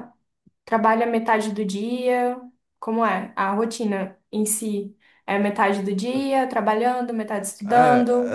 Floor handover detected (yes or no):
yes